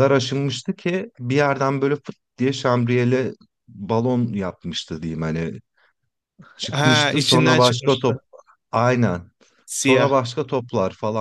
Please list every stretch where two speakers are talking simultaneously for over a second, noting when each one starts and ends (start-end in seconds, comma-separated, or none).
6.7-8.2